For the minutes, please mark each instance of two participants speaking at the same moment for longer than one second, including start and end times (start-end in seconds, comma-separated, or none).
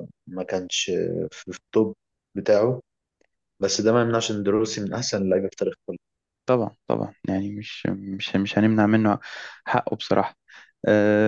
none